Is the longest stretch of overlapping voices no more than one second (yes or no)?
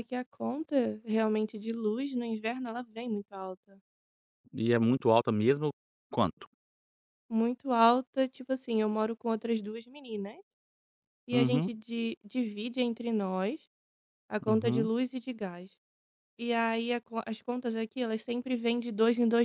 yes